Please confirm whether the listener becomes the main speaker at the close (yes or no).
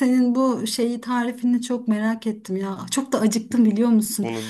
no